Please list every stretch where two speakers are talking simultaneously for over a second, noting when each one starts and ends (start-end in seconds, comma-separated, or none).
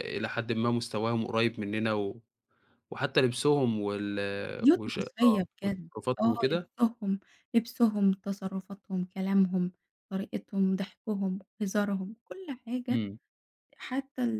4.7-6.7